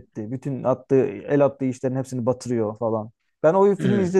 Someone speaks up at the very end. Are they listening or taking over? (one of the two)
listening